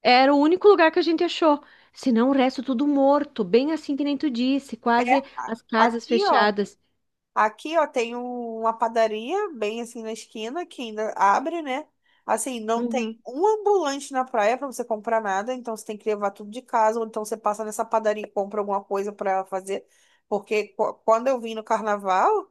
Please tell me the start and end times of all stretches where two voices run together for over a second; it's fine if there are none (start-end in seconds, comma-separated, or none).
5.0-6.5